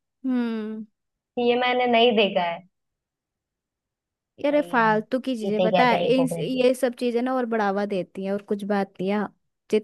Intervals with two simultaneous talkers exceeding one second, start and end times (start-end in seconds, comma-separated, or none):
4.5-6.7